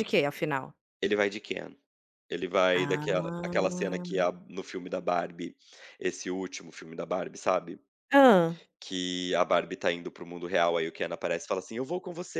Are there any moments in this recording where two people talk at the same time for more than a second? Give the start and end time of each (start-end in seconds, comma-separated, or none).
2.7-4.2